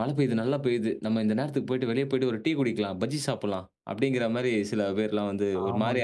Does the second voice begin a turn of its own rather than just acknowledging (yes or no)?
yes